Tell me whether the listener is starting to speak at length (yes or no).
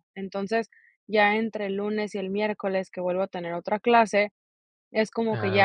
no